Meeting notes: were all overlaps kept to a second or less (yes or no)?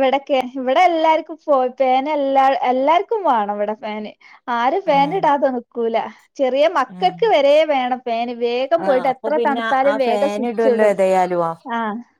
no